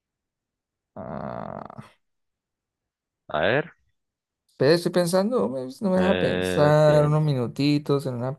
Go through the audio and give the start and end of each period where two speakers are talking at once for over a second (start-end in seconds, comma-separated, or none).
6.0-7.2